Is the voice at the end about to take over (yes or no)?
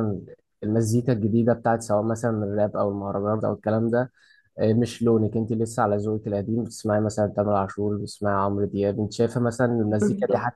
no